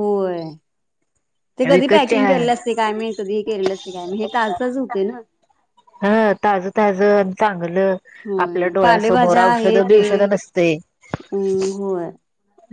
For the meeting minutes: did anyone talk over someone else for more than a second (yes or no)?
yes